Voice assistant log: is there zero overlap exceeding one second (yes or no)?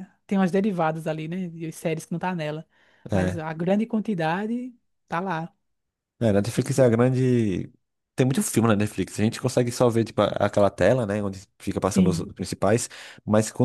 yes